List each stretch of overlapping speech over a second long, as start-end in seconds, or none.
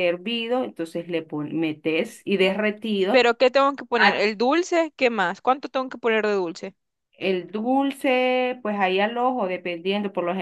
none